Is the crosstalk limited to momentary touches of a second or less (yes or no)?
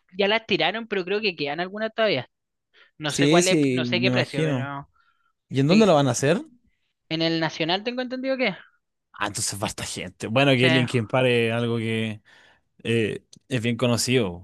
no